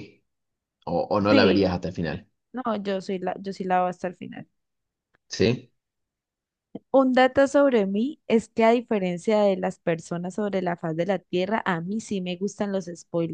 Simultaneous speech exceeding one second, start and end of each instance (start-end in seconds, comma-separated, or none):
none